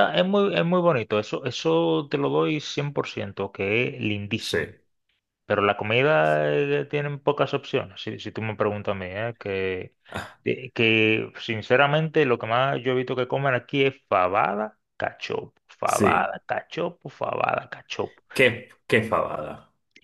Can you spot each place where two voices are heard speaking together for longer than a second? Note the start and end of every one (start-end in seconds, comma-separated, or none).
none